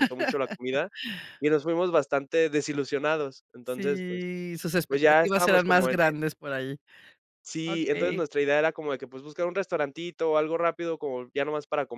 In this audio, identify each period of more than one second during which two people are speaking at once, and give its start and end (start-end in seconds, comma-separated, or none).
4.9-6.1